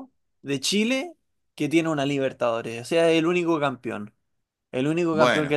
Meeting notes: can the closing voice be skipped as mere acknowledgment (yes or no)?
yes